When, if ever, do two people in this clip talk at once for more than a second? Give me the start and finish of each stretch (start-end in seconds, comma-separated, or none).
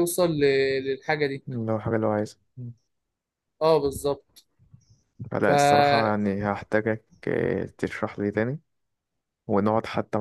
none